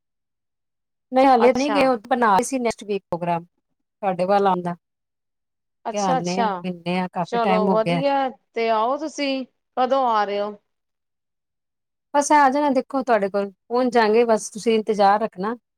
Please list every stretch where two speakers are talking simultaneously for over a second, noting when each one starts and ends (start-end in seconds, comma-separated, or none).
none